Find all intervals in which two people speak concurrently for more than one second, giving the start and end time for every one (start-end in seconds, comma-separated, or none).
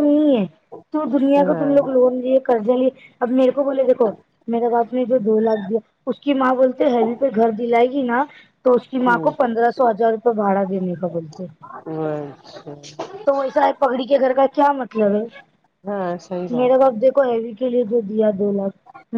none